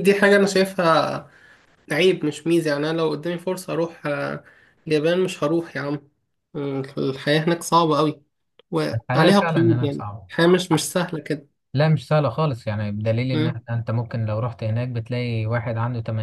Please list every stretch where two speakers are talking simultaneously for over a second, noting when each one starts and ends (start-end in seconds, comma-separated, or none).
8.9-10.3